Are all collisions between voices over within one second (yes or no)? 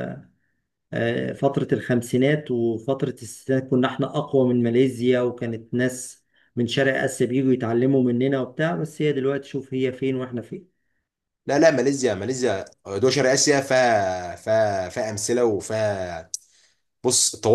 yes